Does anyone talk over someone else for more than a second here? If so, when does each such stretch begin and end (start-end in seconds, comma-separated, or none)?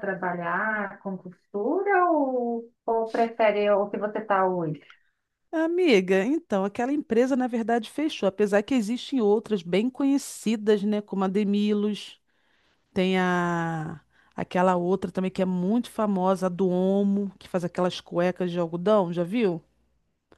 none